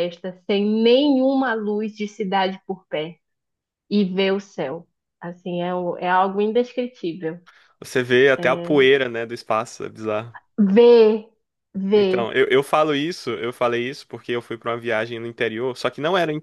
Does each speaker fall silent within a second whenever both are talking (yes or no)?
yes